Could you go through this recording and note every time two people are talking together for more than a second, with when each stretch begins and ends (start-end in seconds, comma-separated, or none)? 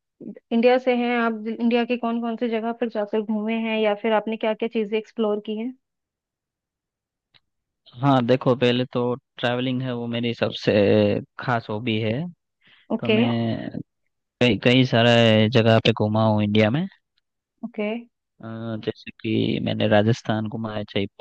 none